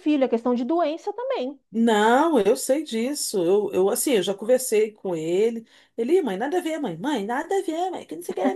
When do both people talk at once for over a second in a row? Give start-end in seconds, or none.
none